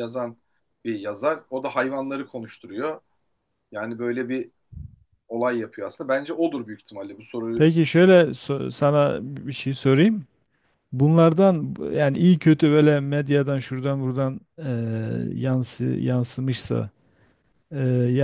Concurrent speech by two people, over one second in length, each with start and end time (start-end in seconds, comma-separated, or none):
none